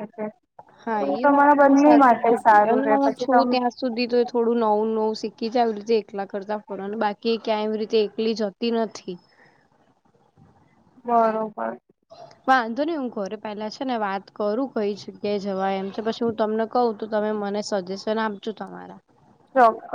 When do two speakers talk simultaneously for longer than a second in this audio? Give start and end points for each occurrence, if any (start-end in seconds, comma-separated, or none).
1.0-3.6